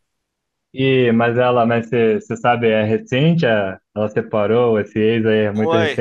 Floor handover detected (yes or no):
yes